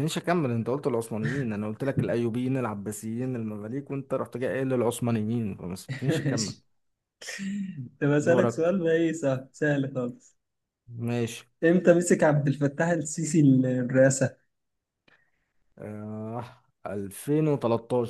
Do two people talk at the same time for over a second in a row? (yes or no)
no